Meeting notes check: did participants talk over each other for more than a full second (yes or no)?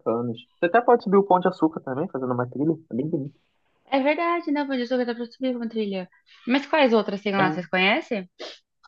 no